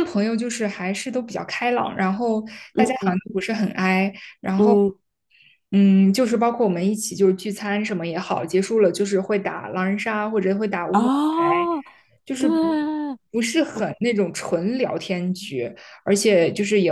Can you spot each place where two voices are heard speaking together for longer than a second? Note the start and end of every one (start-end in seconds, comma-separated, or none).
none